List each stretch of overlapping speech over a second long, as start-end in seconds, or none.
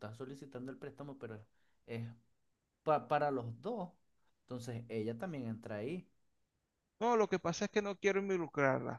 none